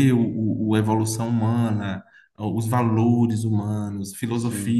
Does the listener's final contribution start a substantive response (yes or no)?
no